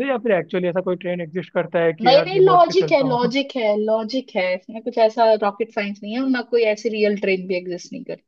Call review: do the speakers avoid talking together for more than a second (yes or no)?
no